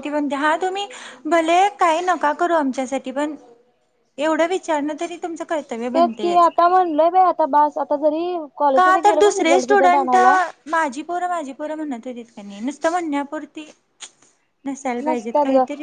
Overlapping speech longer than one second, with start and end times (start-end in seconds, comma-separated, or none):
8.8-10.2